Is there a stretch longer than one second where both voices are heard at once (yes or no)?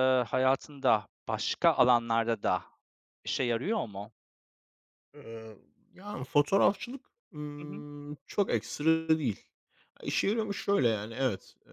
no